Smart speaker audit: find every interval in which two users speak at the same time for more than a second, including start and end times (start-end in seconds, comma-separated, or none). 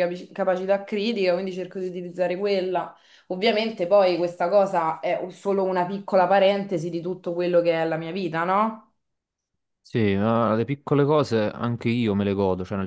none